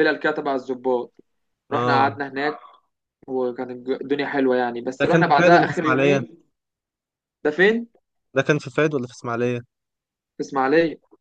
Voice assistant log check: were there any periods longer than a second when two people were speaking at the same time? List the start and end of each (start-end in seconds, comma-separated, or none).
5.0-6.3